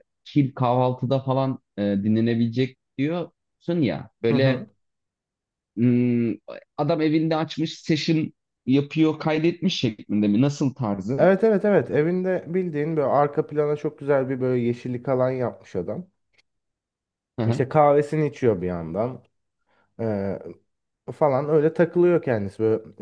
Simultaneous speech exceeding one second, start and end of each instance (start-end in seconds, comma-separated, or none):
none